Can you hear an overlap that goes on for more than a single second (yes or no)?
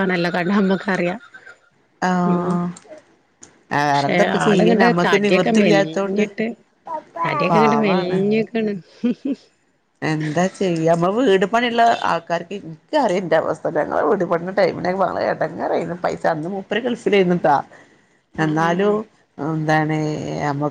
yes